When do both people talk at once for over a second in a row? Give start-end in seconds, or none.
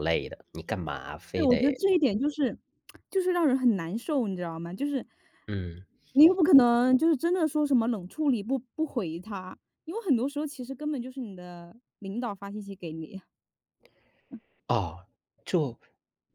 none